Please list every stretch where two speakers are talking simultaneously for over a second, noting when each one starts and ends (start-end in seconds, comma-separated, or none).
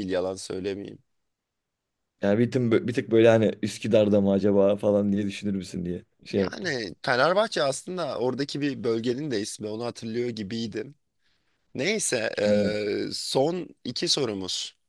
none